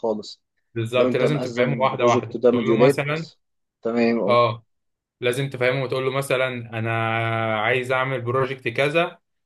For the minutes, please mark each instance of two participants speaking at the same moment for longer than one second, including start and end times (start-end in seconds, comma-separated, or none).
0.9-3.0